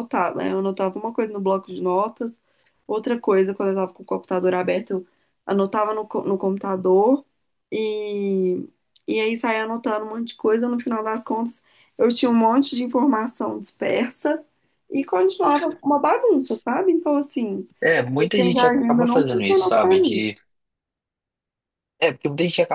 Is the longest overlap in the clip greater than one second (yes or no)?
yes